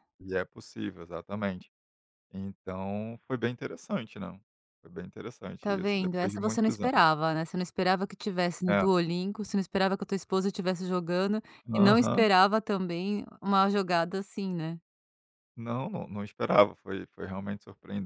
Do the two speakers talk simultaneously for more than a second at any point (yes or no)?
yes